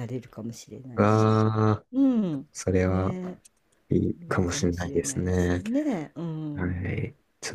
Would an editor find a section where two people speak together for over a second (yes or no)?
yes